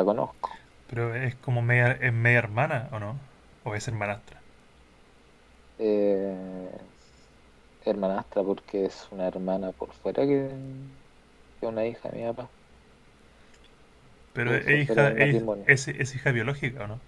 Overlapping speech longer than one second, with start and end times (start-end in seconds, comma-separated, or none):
14.4-15.7